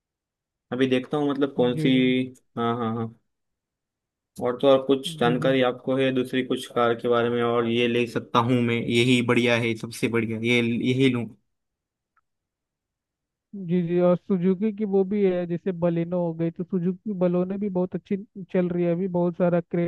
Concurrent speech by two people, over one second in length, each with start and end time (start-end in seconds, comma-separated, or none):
none